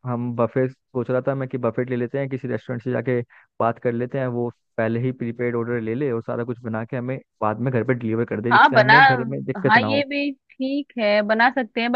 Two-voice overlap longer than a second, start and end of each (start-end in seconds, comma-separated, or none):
none